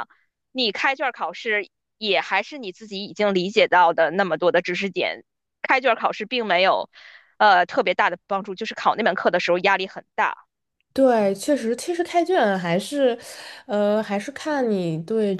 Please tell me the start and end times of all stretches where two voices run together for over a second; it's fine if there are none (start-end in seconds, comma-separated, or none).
none